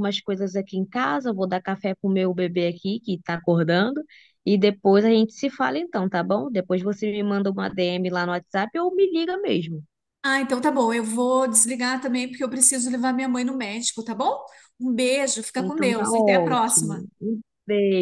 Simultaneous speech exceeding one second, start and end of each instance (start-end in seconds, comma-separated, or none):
15.6-17.0